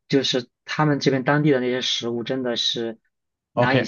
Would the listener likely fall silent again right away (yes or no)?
no